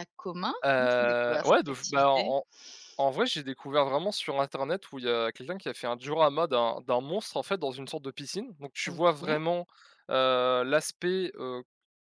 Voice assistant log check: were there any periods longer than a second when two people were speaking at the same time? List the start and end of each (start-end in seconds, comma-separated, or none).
0.6-2.3